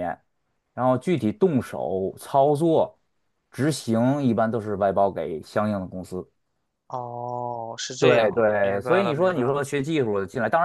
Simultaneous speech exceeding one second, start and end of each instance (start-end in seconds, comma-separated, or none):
8.0-9.6